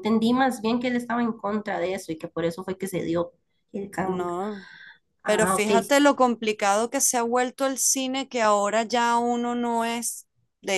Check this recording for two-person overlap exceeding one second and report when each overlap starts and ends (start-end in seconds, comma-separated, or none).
none